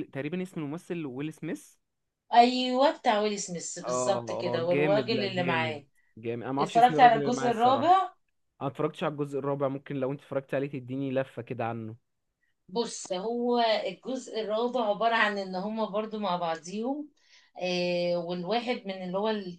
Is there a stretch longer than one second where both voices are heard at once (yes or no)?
yes